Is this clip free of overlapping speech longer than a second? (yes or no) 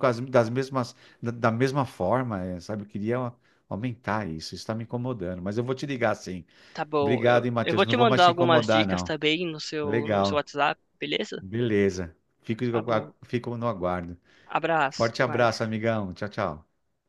no